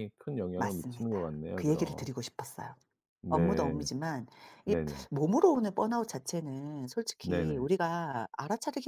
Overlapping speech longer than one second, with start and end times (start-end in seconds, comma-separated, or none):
0.6-2.1